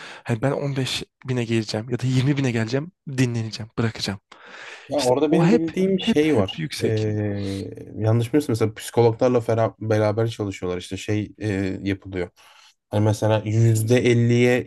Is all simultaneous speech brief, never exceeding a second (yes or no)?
no